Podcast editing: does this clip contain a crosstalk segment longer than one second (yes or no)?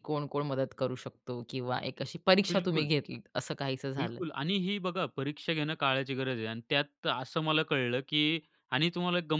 no